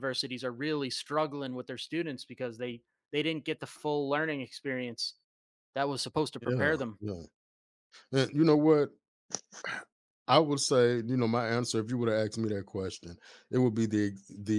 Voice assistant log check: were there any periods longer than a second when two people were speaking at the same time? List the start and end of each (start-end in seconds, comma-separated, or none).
none